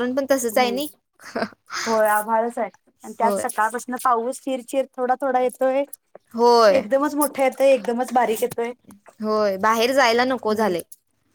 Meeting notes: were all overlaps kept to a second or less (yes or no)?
yes